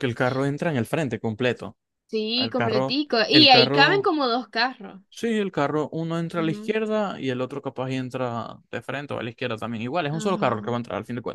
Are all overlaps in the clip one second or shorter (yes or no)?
no